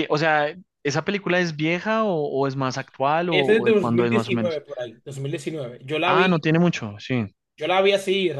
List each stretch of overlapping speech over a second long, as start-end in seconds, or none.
3.3-4.6